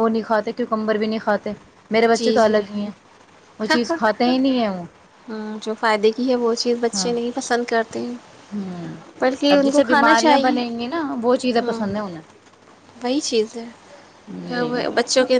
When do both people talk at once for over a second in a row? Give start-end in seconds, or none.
9.5-11.7